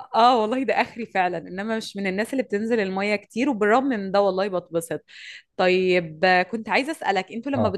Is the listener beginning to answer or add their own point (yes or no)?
no